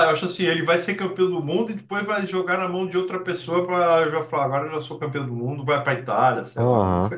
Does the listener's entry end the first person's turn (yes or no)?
yes